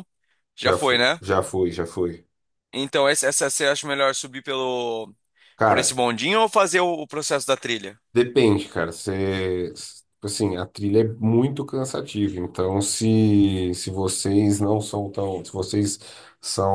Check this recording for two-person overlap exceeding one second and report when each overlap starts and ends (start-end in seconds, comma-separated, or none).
none